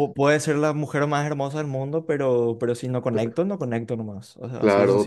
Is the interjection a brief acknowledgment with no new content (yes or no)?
no